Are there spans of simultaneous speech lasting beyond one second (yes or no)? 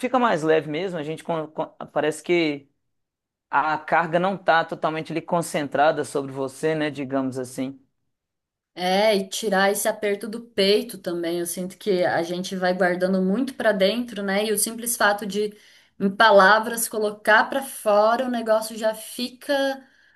no